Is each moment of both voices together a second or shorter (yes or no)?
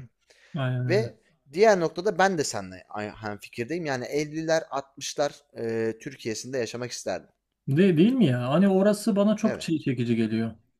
yes